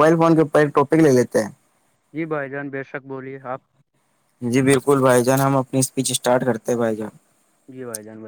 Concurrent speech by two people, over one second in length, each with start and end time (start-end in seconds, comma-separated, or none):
none